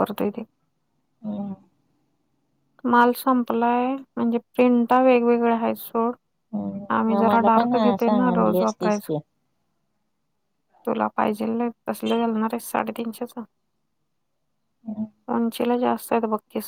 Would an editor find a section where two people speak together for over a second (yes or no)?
yes